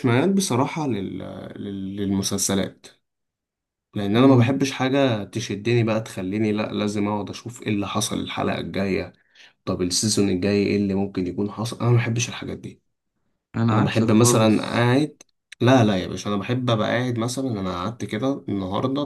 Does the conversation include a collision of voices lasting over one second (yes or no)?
yes